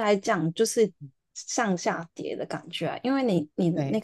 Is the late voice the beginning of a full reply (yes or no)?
no